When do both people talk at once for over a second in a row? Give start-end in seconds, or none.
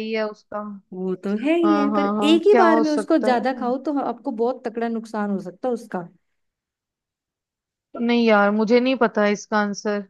1.6-3.6